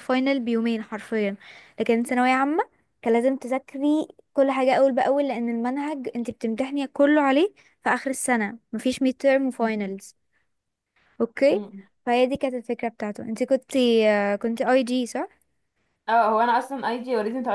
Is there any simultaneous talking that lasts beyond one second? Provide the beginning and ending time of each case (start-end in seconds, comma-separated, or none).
none